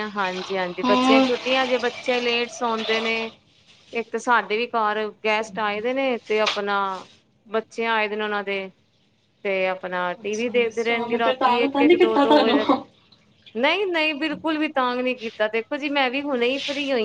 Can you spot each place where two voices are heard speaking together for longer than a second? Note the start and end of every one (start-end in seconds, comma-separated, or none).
10.2-12.6